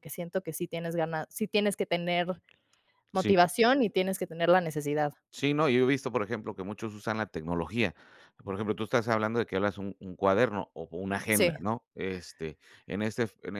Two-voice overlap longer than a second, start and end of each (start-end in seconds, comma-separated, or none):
none